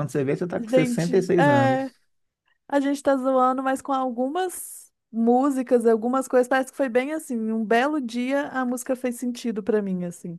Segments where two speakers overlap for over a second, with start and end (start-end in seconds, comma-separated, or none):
0.5-1.9